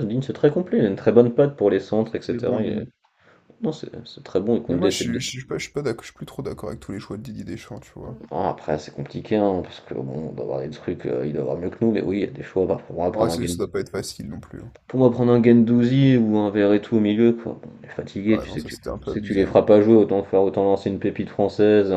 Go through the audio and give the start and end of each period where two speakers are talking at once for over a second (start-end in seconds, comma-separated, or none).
18.3-19.6